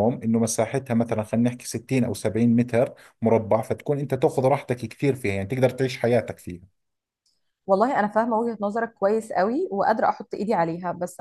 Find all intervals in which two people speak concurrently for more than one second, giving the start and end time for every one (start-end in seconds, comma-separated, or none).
none